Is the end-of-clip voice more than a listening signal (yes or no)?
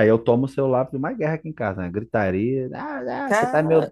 no